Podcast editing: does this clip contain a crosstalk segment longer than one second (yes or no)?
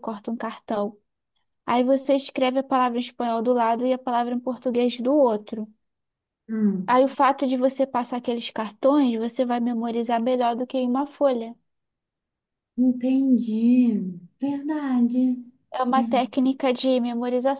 no